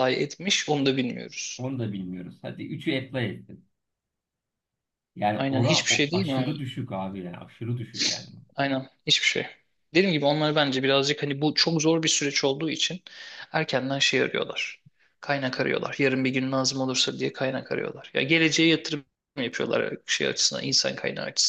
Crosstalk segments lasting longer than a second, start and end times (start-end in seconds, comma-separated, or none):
5.3-6.6